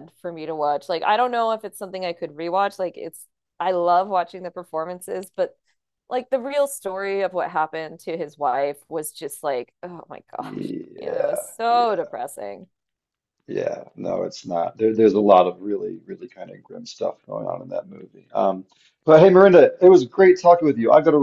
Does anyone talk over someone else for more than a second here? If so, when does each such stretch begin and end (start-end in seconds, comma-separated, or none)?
10.4-12.1